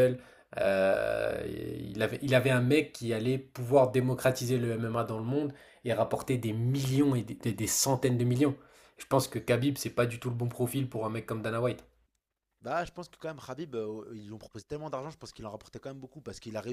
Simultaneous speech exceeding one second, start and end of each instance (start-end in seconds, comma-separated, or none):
none